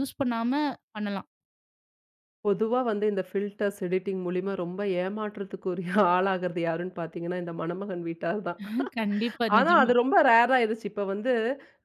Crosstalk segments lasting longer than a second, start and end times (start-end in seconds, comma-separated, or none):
none